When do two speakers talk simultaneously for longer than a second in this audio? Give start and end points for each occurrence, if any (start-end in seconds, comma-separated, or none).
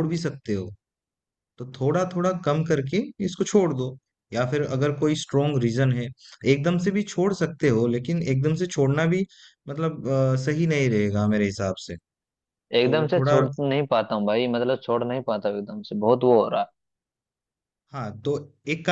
none